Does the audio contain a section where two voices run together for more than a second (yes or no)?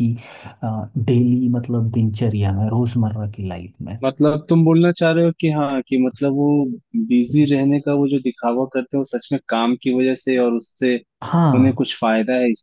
no